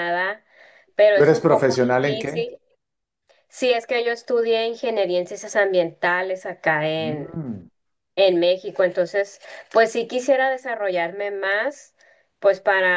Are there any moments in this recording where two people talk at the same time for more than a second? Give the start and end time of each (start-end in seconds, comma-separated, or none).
1.1-2.4